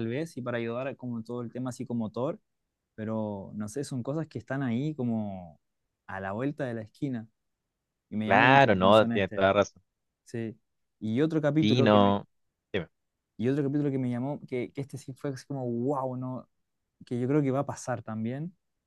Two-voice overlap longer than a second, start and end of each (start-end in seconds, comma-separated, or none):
8.2-9.5